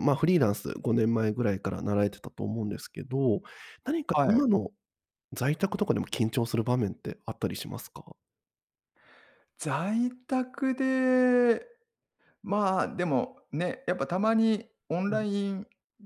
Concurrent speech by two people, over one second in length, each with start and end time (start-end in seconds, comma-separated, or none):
none